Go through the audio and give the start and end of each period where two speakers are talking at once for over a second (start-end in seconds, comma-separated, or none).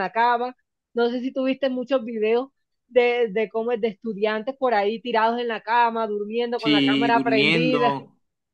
6.6-8.0